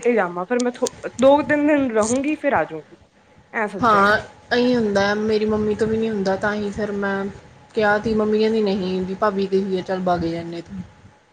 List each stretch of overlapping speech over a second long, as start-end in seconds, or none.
none